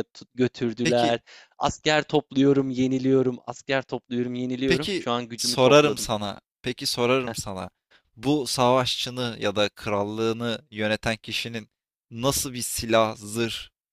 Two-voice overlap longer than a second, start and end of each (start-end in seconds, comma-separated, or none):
4.7-6.1